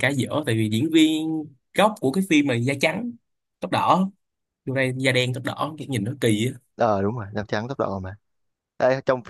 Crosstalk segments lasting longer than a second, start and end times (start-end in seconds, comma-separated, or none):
none